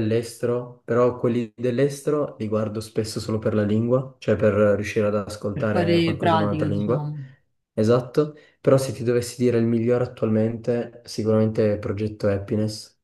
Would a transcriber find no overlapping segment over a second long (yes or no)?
no